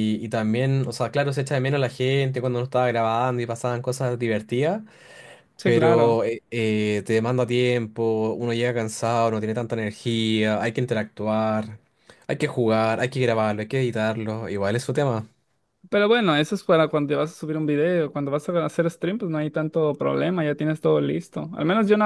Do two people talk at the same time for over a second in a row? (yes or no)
no